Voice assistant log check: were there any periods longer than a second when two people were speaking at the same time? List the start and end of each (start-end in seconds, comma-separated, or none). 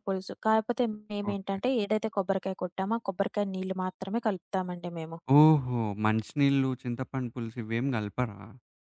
none